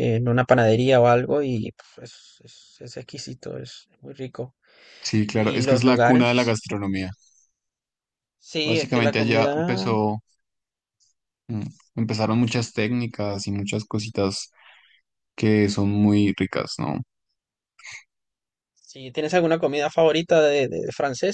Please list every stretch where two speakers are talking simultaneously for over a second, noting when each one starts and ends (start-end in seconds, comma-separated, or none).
5.3-6.6, 8.6-9.9